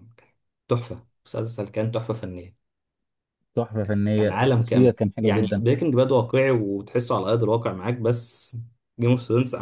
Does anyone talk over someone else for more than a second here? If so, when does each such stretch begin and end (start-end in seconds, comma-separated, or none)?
4.2-5.6